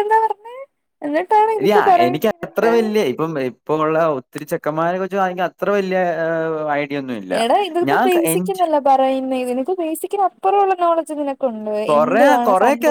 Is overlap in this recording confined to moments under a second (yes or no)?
yes